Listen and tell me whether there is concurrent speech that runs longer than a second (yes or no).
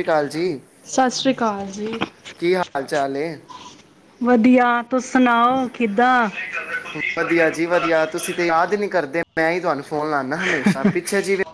no